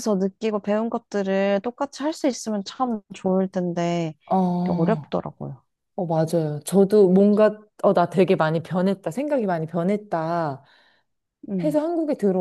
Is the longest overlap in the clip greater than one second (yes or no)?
no